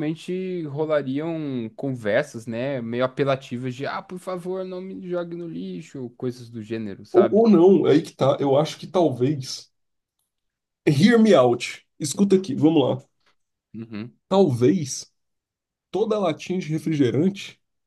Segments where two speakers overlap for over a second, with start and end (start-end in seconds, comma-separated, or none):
none